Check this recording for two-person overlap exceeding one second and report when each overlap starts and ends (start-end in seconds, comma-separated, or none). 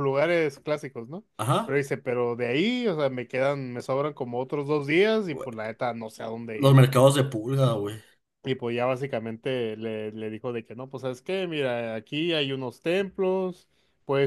none